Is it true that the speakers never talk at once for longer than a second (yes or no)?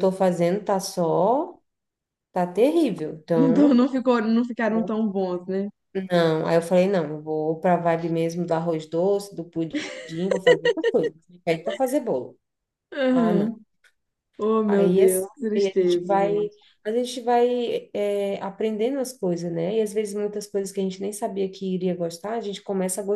no